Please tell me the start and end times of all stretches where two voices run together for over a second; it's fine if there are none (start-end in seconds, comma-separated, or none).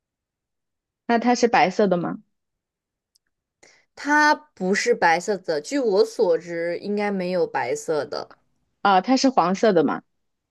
none